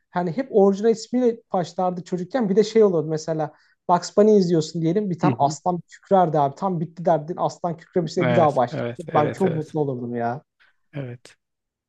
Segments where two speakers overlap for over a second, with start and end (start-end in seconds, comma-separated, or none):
8.2-9.8